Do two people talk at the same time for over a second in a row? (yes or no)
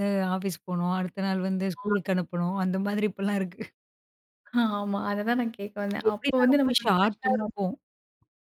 yes